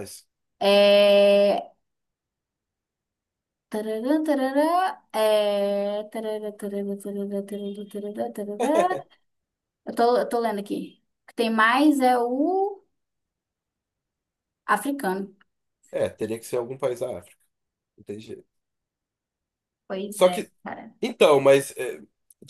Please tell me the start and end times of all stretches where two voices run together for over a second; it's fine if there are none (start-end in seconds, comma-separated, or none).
none